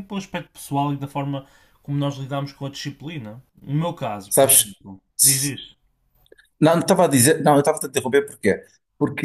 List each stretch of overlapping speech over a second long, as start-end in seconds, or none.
none